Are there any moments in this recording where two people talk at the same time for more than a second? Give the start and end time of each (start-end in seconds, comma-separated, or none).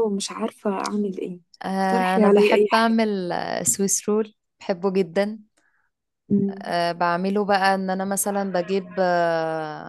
1.6-3.0